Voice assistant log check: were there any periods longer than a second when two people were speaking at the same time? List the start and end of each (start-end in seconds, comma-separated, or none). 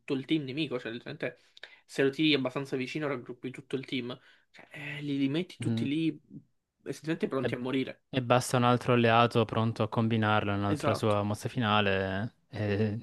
none